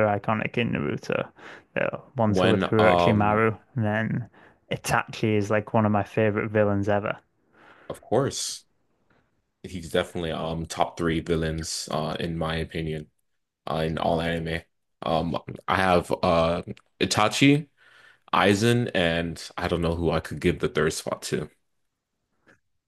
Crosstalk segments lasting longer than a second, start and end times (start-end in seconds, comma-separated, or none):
2.3-3.5